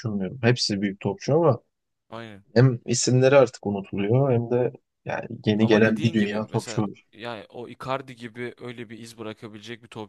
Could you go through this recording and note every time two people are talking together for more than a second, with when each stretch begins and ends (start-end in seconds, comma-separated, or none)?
5.6-7.1